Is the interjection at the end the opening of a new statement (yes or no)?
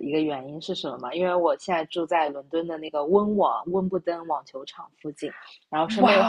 no